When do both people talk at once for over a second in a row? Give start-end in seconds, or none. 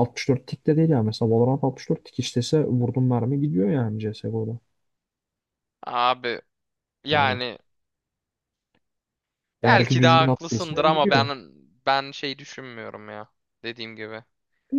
9.6-11.3